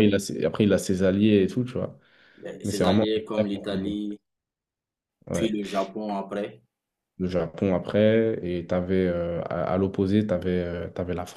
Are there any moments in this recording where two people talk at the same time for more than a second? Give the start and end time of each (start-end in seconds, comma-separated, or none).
2.6-4.0